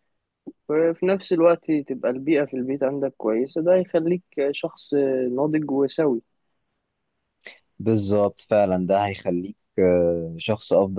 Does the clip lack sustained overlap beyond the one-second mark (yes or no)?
yes